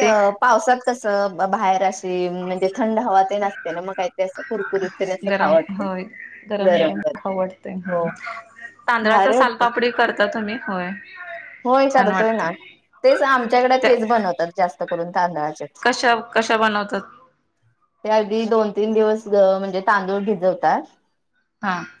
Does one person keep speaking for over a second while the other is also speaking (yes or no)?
no